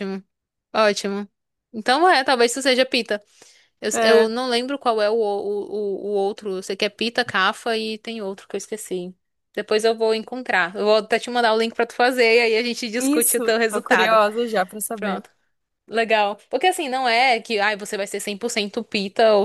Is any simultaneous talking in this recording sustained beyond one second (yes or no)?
yes